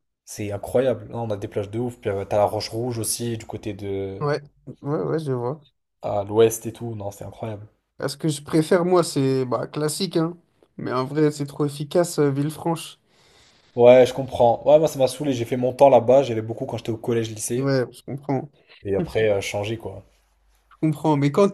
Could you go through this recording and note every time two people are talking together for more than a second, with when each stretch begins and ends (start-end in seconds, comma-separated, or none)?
none